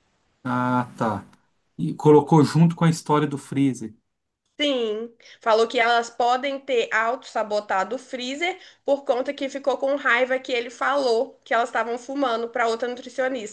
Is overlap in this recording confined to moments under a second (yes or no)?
yes